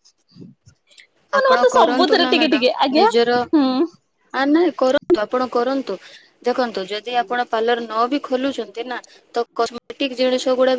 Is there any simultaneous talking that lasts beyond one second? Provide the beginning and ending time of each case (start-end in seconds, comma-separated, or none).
1.4-3.4